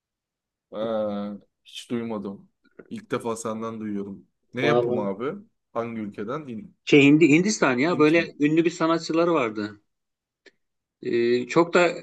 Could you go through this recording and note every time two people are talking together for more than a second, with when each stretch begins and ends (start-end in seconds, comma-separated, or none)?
none